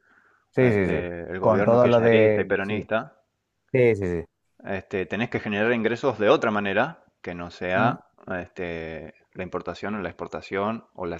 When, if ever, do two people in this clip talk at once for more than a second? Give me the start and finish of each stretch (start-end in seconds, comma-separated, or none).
0.6-2.9